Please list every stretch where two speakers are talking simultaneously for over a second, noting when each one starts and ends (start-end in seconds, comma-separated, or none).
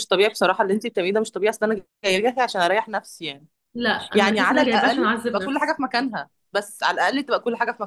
4.1-5.7